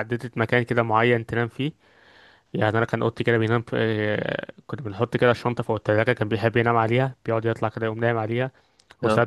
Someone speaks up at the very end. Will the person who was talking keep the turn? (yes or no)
yes